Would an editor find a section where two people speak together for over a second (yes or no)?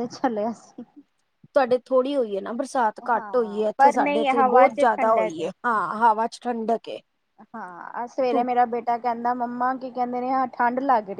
yes